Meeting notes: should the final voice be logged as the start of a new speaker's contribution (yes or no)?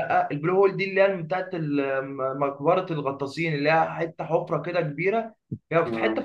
no